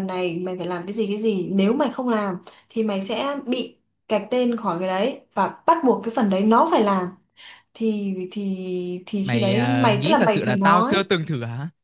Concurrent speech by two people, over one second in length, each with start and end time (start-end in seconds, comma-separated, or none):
9.2-11.1